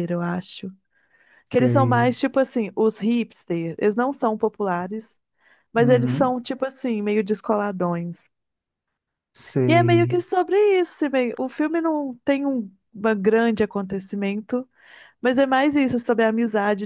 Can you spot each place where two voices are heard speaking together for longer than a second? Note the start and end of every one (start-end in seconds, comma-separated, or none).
none